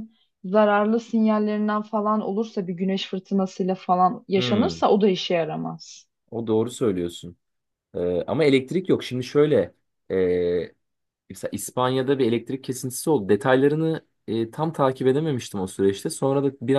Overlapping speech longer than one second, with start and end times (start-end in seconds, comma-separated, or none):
none